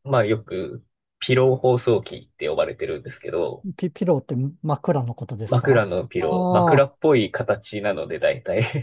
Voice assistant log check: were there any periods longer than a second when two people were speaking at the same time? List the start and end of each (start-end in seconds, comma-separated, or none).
5.5-6.9